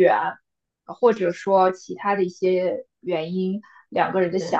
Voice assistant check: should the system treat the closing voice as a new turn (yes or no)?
no